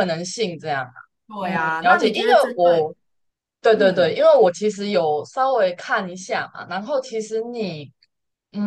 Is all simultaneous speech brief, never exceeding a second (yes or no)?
no